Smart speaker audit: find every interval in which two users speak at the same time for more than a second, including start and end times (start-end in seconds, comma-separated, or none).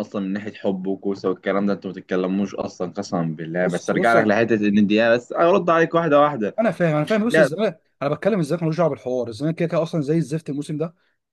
none